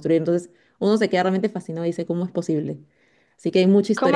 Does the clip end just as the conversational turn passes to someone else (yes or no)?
yes